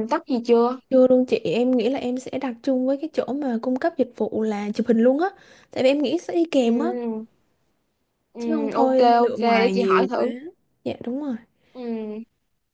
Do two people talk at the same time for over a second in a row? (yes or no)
yes